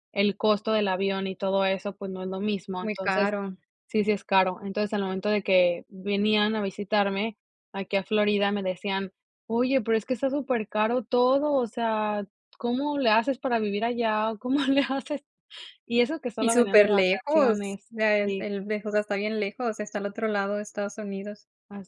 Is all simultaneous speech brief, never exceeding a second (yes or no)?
no